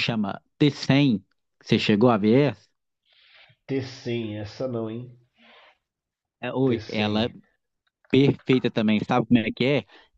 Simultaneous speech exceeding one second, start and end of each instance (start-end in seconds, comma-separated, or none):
none